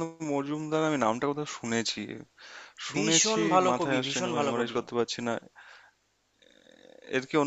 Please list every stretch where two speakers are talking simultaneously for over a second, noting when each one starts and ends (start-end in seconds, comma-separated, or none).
2.9-4.8